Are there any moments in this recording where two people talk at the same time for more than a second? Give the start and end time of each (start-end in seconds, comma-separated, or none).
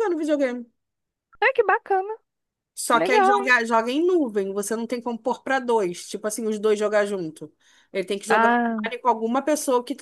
none